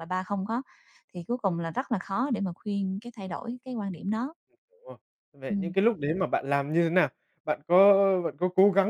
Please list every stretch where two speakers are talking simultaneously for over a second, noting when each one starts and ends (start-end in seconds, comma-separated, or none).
none